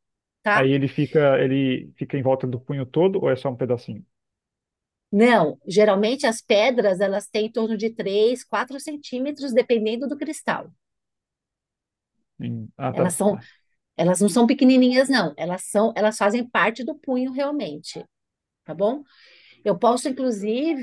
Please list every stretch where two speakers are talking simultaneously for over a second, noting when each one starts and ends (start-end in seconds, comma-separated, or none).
none